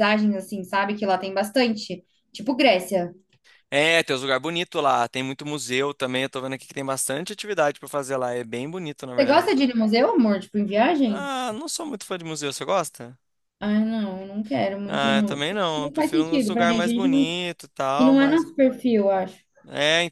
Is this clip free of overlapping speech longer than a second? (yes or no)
no